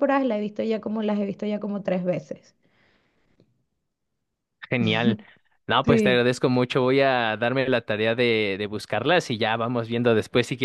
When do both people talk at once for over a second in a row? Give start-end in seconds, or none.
none